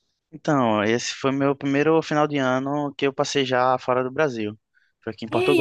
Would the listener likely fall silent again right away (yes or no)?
no